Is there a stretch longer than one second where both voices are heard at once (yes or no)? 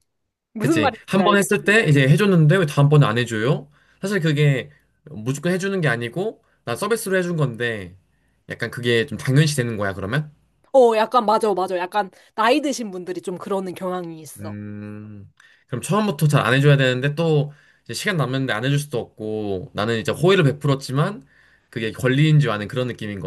yes